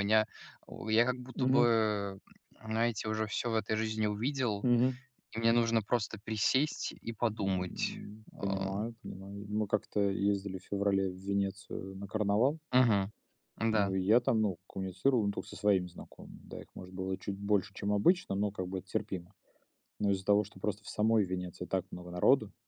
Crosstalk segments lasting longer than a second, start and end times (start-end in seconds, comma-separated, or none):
7.3-8.7